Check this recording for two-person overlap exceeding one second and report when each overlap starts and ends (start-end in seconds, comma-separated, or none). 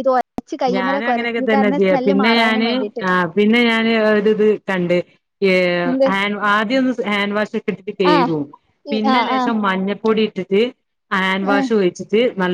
0.8-2.7